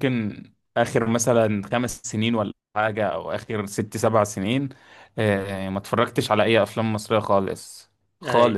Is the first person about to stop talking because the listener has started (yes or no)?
no